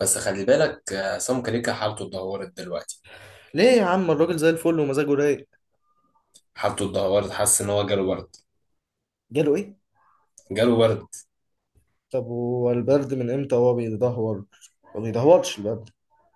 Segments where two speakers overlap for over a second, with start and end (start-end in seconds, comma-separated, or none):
none